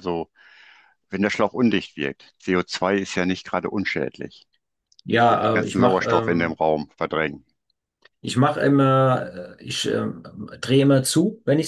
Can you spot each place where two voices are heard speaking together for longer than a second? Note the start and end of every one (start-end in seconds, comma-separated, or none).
5.3-6.6